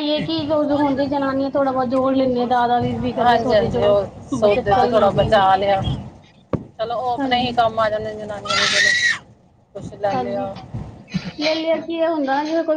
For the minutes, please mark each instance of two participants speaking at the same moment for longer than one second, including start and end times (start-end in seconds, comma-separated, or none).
3.2-5.4